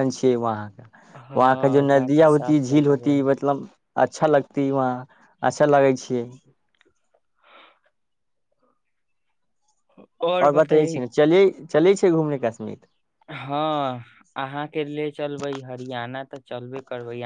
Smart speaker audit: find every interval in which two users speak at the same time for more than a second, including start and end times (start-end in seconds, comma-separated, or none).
1.4-3.2